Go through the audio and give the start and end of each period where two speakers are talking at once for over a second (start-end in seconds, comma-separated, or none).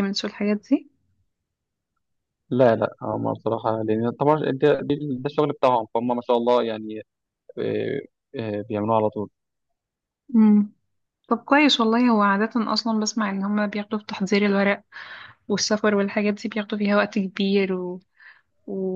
none